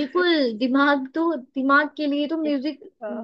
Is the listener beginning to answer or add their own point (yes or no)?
no